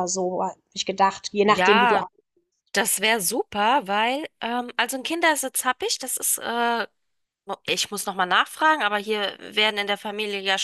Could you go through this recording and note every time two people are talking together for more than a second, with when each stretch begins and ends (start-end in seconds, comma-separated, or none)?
none